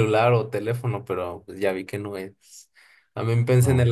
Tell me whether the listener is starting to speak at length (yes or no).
no